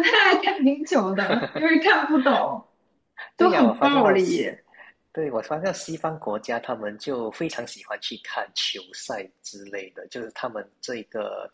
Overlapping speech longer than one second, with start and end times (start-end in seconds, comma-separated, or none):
3.4-4.6